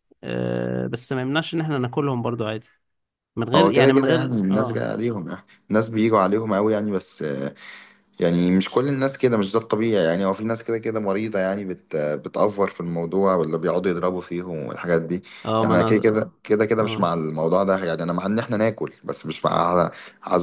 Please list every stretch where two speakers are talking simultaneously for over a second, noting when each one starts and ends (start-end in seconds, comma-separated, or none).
3.5-4.8